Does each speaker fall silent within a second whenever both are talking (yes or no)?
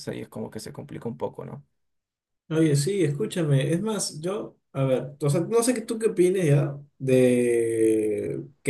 yes